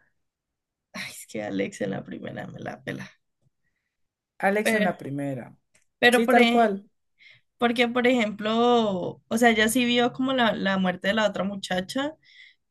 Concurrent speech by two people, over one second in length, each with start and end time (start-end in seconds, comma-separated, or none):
none